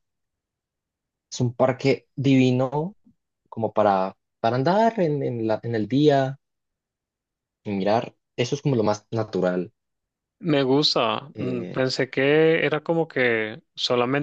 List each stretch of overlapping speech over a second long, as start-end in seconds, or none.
none